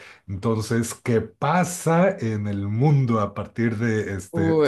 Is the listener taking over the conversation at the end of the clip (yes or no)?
yes